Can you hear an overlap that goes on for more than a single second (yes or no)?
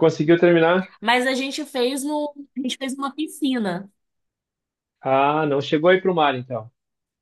no